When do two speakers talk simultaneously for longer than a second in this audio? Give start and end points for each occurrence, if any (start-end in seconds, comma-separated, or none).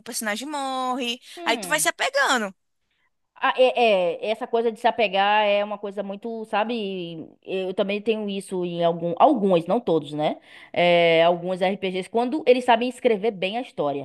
none